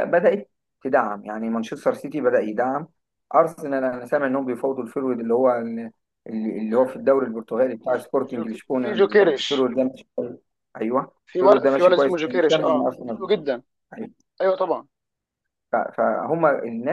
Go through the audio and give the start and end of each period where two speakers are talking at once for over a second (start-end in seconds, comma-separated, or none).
7.9-9.7, 11.3-13.3